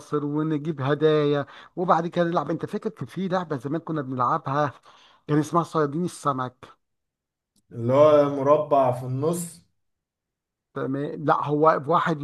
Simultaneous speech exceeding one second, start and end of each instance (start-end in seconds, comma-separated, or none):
none